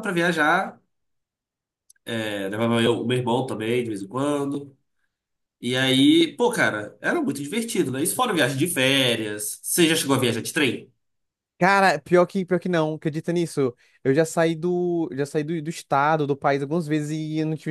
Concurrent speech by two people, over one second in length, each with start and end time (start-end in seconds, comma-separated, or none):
none